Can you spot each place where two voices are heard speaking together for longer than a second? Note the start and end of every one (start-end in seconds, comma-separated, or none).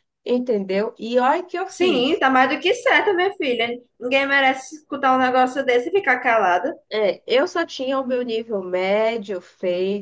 none